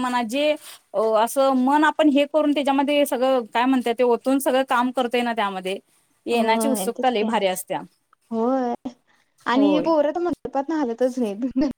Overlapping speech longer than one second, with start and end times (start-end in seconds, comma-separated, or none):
none